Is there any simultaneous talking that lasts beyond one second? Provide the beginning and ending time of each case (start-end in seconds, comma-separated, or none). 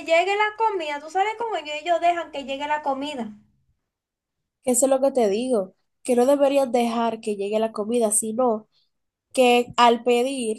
none